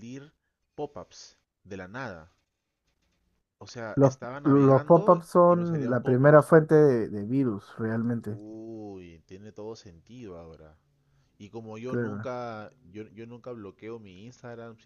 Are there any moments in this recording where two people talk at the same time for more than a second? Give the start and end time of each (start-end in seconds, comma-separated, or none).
4.0-6.5